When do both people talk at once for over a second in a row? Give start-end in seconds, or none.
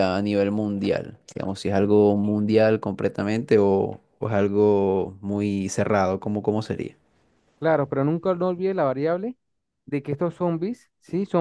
none